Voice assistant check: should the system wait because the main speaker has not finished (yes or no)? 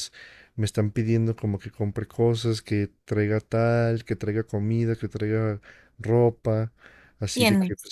yes